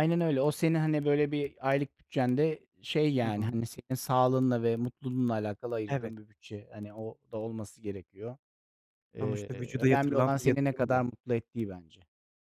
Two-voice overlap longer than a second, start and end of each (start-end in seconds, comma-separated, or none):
9.2-11.0